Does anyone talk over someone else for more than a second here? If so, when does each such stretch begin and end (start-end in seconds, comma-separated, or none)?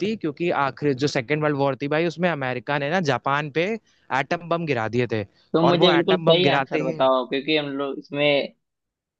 5.7-7.0